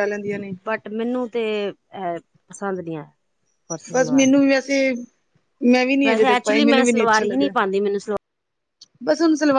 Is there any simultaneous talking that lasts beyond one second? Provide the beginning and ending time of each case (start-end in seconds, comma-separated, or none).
6.0-7.5